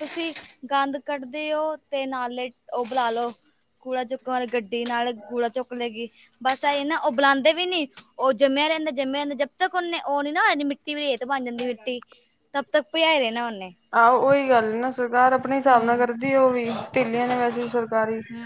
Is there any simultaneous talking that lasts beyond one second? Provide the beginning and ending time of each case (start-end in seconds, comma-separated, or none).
none